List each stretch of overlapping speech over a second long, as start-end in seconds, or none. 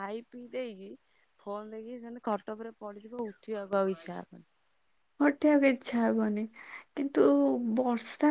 none